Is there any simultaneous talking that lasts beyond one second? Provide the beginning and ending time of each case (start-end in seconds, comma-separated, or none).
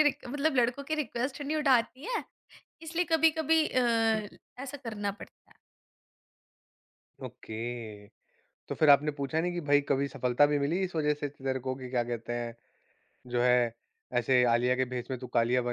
none